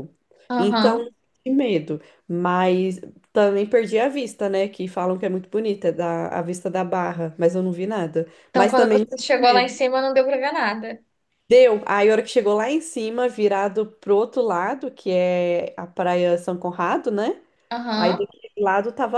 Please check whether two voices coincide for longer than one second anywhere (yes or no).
yes